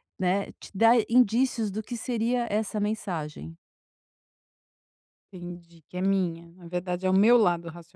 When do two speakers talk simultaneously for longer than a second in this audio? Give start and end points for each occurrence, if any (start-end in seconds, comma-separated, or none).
none